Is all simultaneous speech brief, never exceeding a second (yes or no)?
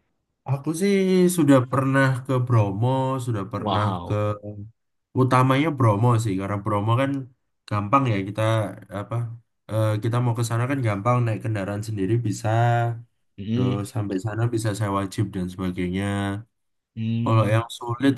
yes